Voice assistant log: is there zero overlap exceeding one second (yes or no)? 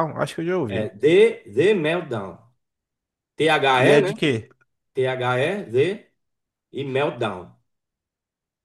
yes